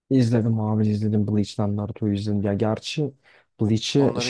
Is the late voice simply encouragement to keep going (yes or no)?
yes